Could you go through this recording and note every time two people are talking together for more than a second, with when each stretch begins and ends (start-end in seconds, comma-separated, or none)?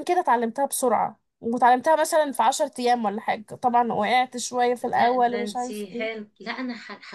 4.9-6.2